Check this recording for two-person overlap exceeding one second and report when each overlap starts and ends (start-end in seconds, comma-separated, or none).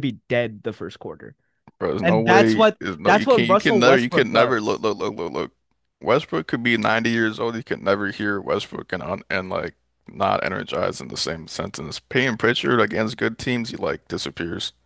2.0-4.8